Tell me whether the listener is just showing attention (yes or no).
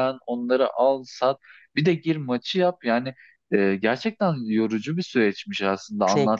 yes